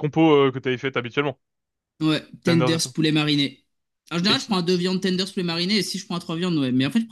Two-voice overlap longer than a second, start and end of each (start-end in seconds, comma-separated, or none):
none